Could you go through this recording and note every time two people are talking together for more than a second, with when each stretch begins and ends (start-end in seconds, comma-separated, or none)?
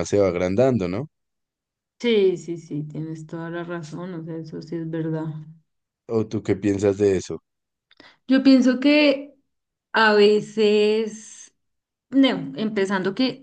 none